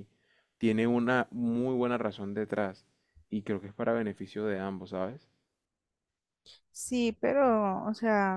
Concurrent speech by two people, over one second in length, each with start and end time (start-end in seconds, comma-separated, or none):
none